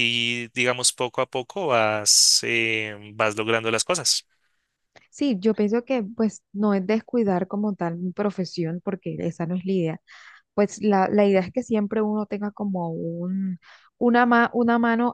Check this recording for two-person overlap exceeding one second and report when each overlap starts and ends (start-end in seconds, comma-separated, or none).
none